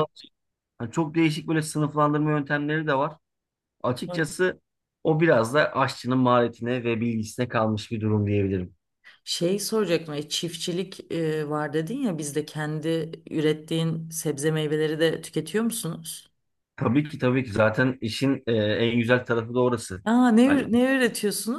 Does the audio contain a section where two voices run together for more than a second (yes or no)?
no